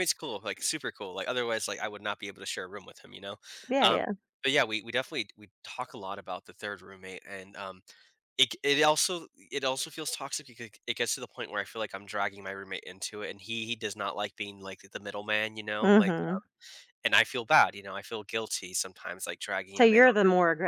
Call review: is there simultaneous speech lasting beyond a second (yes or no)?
no